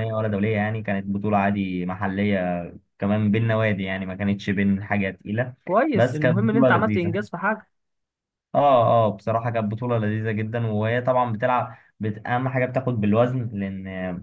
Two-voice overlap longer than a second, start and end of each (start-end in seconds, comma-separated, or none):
5.9-7.2